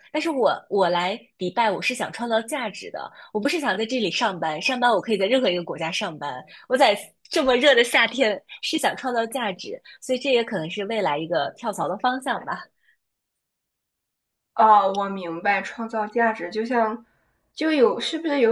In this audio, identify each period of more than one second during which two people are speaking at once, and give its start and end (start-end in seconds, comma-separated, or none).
none